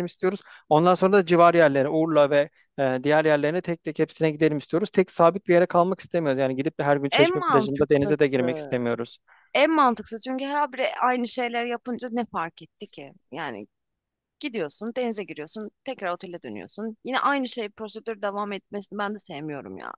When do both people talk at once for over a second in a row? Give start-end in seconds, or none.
7.1-8.8